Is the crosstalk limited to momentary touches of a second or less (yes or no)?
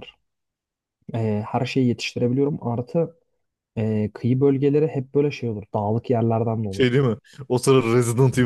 yes